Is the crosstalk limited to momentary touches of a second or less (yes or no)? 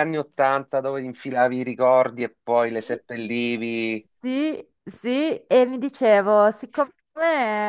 yes